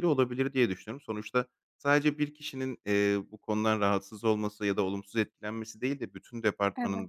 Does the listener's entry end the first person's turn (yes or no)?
no